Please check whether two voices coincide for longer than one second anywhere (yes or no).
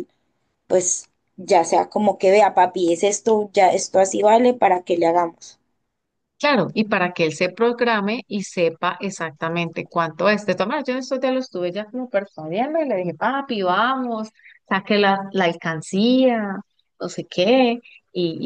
no